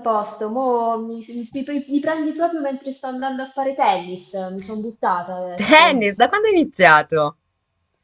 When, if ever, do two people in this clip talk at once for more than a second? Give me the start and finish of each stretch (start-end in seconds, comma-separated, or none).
none